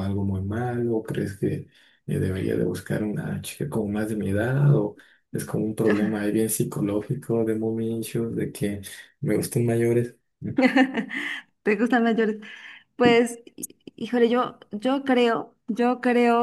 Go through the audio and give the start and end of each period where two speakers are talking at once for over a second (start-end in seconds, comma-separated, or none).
none